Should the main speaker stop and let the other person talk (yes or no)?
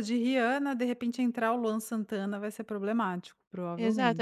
yes